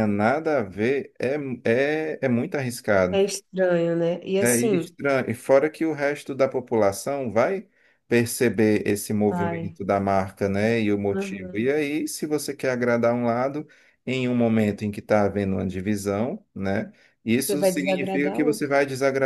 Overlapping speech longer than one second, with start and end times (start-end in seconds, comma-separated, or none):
17.4-18.7